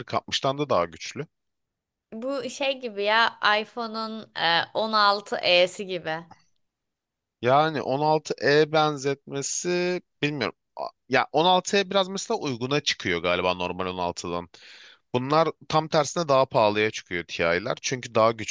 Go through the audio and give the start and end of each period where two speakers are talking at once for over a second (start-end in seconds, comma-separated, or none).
none